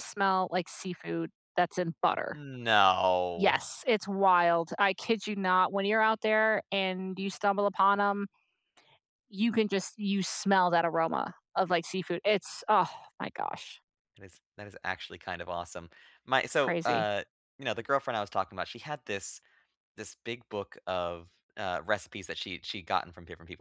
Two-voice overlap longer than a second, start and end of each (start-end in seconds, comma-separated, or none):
none